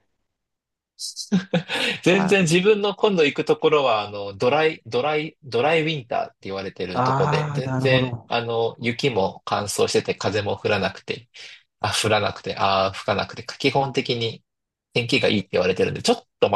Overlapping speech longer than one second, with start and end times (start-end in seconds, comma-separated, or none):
6.9-8.3